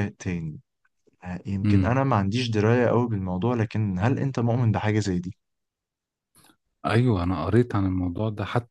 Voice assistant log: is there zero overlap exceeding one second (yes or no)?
yes